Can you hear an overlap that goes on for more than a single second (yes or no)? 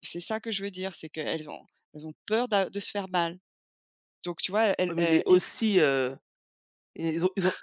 no